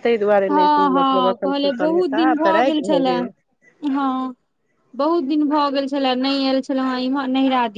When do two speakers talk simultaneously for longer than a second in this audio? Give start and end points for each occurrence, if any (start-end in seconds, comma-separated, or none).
0.5-2.8